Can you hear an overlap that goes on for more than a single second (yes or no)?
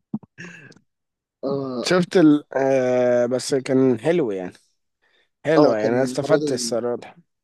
yes